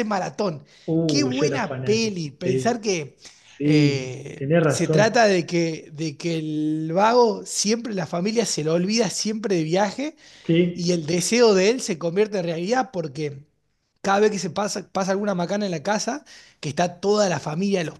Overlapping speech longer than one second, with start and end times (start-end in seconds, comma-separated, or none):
1.1-2.8, 3.6-5.1